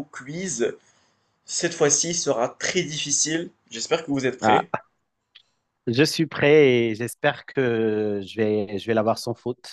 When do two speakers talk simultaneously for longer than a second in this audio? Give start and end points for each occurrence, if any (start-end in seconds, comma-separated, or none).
none